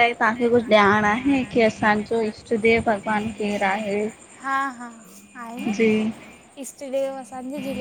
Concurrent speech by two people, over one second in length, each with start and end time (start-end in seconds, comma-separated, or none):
none